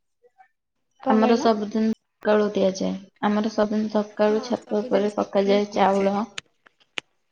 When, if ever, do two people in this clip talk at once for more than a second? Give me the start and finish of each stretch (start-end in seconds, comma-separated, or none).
4.2-6.1